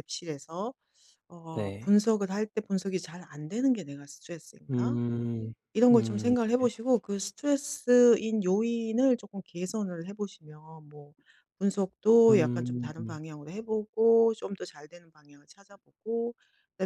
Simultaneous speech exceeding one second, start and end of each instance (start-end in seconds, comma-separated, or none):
none